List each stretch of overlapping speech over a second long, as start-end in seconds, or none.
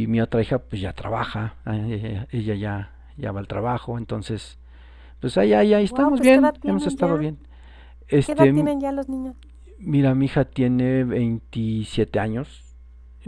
5.9-7.2